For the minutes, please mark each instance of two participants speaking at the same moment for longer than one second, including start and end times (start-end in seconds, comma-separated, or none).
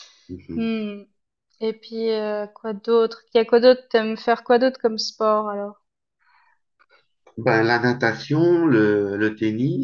none